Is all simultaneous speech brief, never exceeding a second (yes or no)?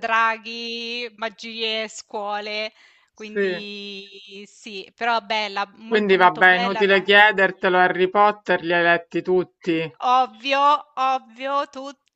no